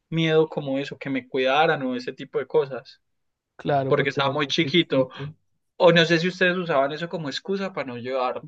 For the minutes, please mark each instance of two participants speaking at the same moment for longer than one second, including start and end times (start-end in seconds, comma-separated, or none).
3.9-5.1